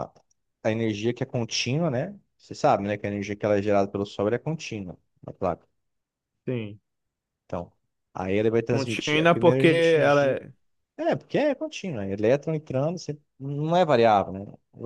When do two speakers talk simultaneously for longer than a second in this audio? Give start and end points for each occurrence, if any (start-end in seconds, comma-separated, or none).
8.7-10.4